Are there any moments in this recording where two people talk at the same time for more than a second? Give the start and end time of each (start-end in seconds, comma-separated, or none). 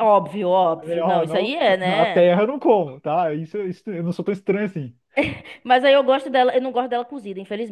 0.8-2.3